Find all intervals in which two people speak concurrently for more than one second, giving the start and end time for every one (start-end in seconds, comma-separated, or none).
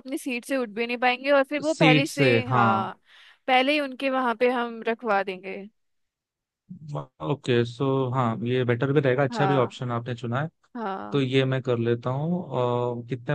1.6-2.9